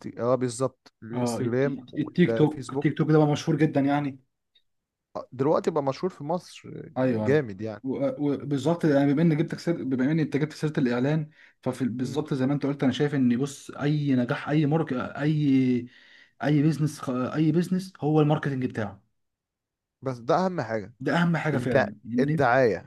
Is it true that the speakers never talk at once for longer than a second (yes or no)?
no